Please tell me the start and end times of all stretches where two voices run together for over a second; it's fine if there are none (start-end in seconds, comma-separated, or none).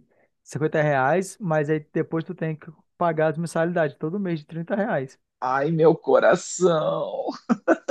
none